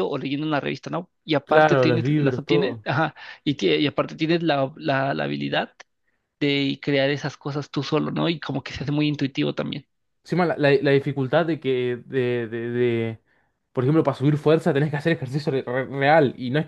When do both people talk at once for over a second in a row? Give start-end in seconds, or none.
1.4-2.9